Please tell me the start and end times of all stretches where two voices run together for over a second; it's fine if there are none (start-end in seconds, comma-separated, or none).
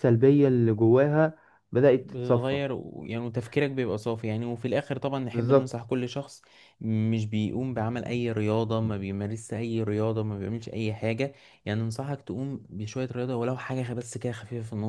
none